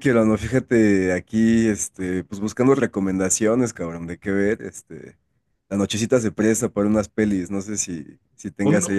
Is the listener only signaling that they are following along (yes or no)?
no